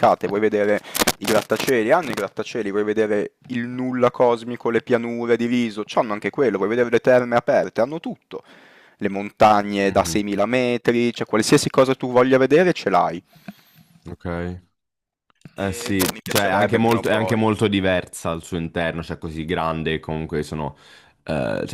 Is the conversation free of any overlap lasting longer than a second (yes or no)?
no